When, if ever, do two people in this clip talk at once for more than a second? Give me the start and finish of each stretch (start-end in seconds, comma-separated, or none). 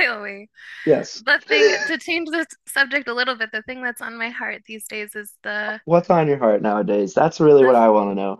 none